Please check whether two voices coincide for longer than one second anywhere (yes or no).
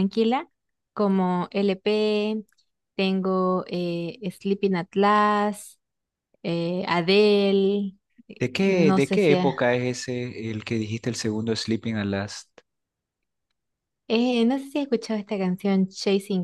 yes